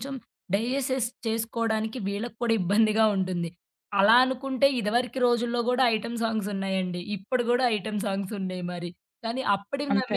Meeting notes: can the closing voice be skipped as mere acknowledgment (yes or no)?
yes